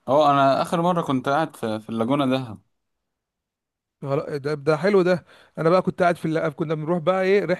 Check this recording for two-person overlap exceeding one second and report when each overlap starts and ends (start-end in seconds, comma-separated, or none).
none